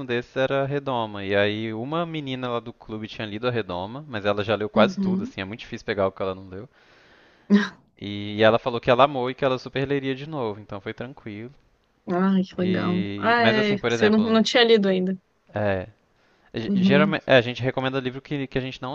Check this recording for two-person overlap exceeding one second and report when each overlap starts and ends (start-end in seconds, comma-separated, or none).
12.6-14.4